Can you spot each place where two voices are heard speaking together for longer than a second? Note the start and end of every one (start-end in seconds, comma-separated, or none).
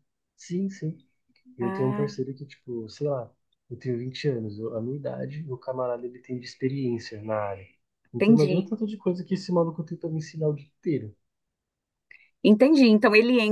none